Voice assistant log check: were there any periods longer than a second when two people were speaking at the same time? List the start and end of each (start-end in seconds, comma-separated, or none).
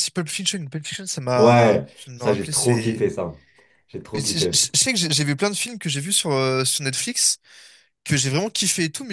1.4-3.1